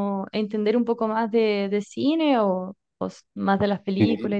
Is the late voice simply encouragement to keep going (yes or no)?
no